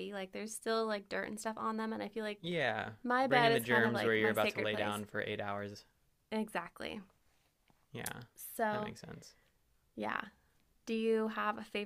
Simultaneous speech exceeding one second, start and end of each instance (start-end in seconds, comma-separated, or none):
3.3-5.0